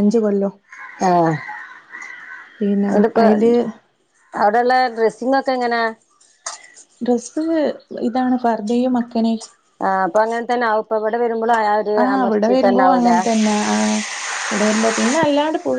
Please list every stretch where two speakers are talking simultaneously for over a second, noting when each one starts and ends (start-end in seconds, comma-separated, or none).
none